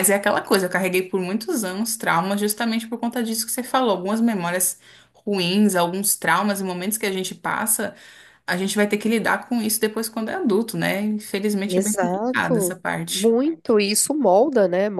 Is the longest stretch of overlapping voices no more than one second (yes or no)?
no